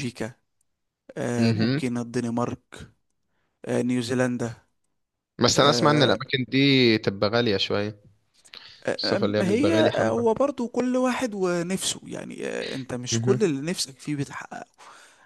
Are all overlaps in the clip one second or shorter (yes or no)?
no